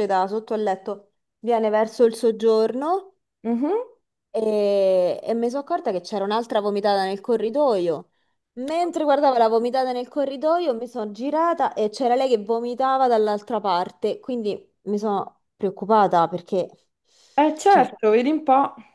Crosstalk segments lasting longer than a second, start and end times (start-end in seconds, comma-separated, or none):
none